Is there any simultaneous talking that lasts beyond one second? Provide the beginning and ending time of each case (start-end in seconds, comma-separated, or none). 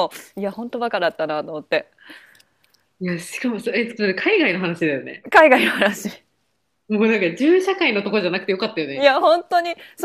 none